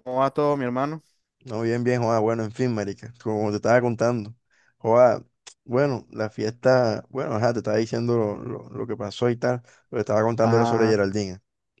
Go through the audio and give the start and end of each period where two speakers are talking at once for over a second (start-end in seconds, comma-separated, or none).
none